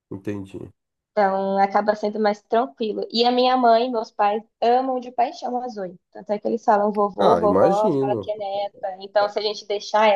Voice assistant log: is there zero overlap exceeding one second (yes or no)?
no